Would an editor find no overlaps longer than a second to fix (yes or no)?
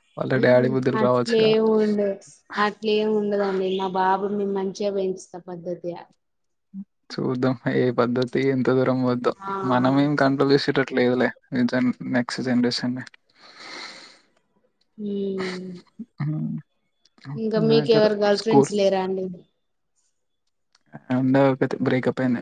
yes